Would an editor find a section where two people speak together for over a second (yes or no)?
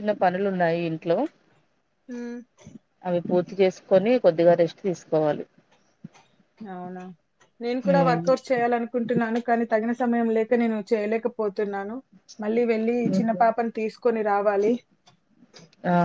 no